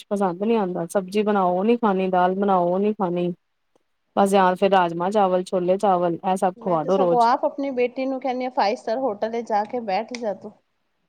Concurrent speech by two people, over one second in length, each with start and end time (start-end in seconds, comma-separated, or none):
none